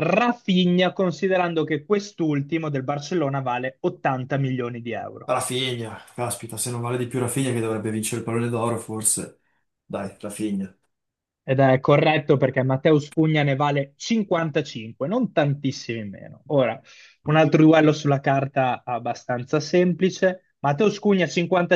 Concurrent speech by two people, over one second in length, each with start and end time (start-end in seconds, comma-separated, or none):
none